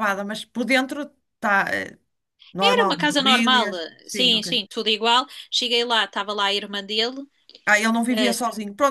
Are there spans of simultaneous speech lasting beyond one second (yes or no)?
yes